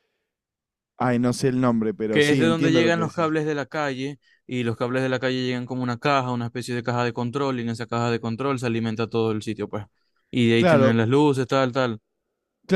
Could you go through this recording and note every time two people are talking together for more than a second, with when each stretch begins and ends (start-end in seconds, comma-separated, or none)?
2.1-3.4